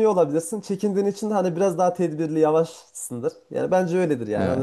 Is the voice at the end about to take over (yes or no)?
yes